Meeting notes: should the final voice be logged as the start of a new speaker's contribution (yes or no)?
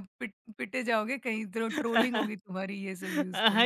yes